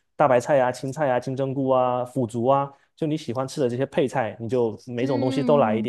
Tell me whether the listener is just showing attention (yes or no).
no